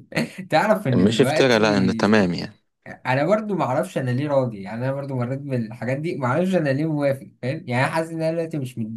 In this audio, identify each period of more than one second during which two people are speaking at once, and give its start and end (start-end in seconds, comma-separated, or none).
1.0-2.3